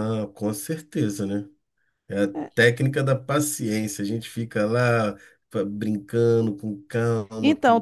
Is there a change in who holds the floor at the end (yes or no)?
yes